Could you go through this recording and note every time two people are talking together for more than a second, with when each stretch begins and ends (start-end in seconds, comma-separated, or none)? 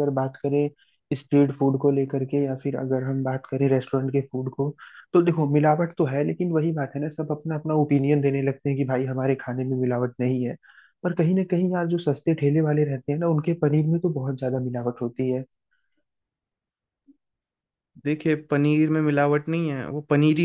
none